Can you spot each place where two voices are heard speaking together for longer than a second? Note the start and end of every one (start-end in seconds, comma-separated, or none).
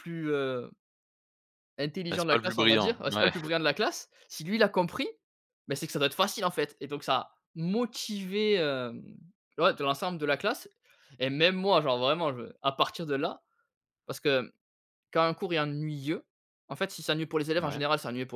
2.1-3.3